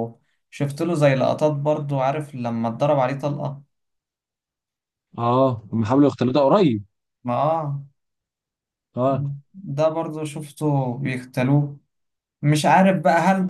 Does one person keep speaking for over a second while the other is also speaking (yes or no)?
no